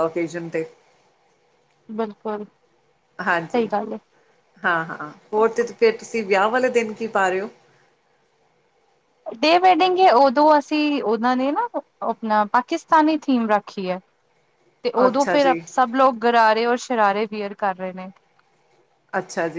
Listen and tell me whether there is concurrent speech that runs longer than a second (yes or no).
no